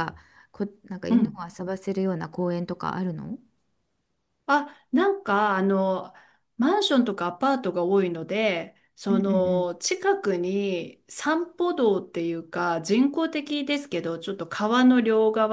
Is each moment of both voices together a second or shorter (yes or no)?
yes